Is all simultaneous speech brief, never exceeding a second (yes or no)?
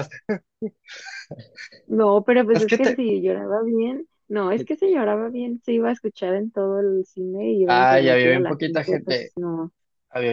no